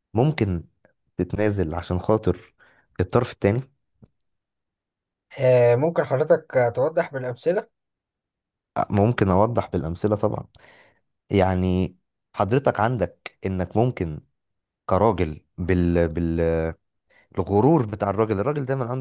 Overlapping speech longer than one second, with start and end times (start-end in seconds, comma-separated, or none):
none